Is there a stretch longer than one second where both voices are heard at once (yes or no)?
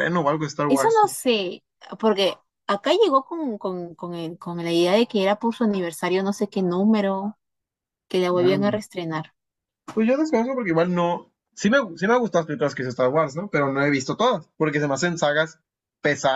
no